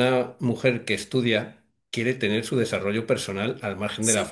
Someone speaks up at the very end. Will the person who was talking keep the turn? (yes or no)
yes